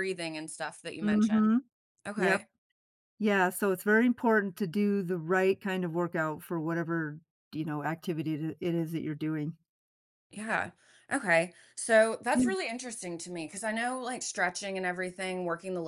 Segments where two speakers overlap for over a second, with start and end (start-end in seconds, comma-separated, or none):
none